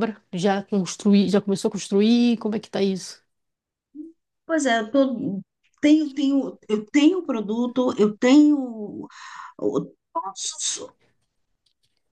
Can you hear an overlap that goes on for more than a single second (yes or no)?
no